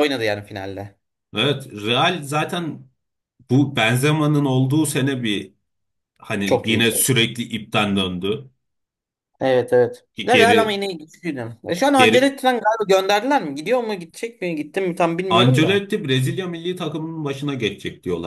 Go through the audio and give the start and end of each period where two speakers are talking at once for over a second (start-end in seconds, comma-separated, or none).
none